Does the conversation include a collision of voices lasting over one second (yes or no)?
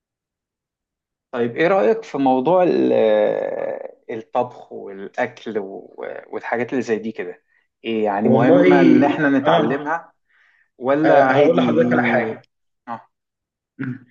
yes